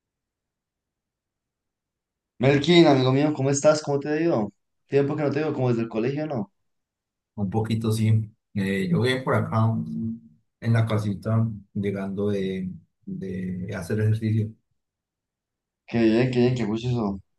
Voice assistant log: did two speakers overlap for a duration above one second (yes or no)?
no